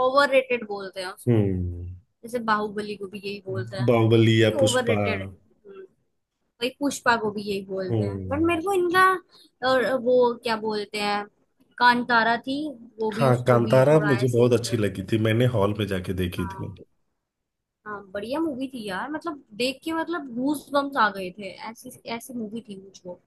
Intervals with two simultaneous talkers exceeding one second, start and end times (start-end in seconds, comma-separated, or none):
13.1-15.2